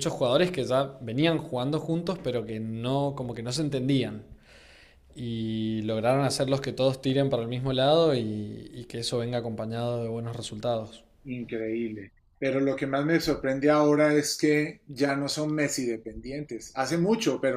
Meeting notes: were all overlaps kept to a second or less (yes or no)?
yes